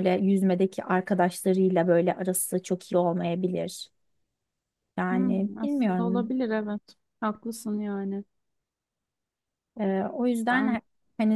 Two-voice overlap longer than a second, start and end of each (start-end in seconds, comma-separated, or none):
5.1-6.3